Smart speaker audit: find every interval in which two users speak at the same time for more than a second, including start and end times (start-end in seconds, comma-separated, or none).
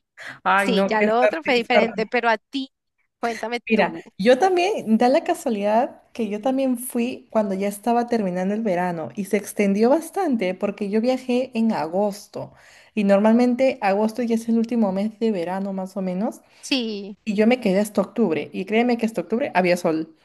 0.5-2.1